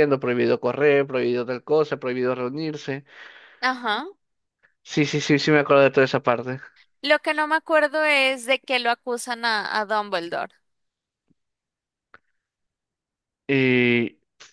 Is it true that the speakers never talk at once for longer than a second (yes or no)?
yes